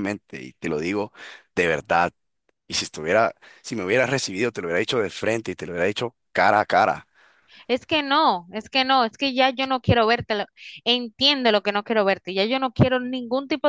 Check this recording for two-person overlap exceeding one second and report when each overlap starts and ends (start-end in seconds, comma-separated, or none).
none